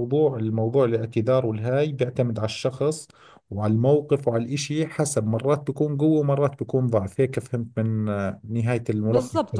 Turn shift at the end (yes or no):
yes